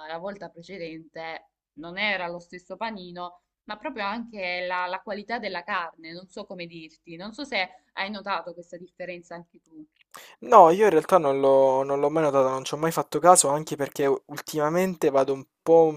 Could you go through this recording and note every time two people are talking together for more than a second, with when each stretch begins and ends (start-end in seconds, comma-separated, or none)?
none